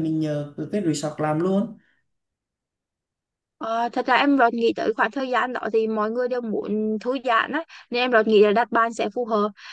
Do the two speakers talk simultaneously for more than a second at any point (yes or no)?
no